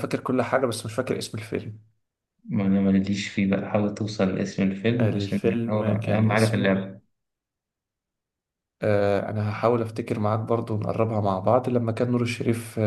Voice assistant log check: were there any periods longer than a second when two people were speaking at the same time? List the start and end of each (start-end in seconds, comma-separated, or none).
5.0-6.8